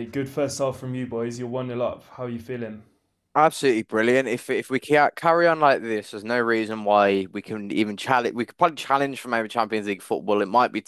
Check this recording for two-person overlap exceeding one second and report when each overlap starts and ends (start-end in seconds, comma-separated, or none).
none